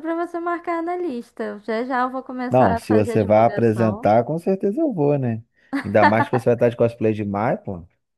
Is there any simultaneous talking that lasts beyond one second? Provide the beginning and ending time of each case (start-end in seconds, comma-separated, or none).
2.5-4.1